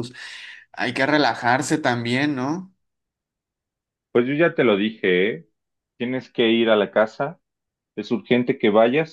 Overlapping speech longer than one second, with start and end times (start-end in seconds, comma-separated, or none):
none